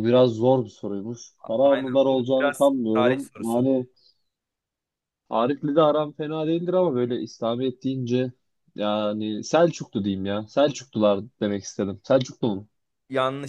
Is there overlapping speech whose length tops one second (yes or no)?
yes